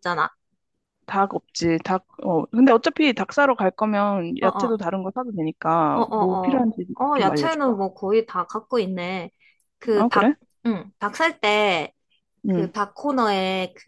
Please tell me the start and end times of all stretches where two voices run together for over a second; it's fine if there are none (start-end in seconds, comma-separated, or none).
5.9-7.7